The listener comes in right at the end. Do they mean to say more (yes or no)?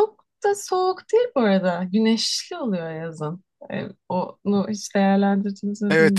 yes